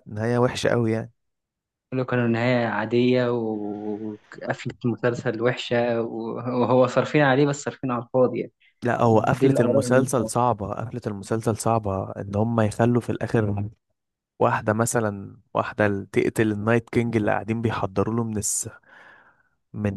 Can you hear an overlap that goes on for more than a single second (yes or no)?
yes